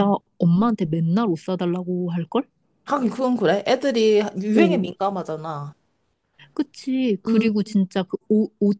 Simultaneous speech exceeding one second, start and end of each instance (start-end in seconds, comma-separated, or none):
none